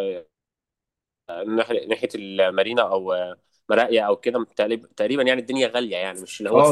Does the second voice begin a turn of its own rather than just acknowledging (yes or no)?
yes